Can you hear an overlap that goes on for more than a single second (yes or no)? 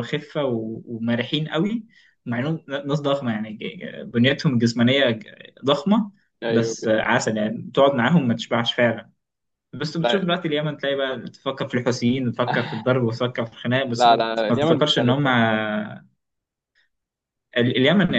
yes